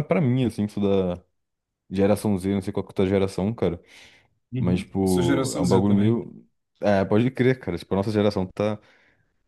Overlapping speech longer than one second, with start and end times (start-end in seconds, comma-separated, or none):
4.6-6.2